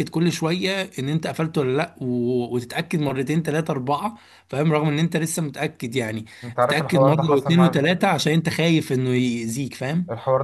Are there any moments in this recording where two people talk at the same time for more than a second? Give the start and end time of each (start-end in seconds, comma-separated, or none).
6.6-8.1